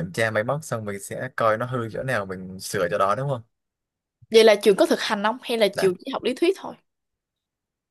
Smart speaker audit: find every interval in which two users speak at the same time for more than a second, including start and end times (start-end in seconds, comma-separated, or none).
none